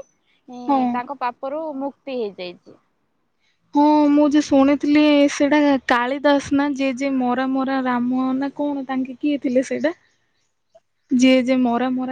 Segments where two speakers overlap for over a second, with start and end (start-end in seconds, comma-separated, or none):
none